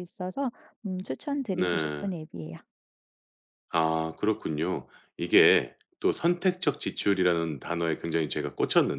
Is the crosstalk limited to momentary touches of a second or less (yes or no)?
yes